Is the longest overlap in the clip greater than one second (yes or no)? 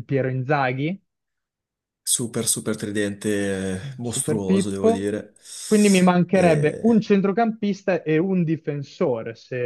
yes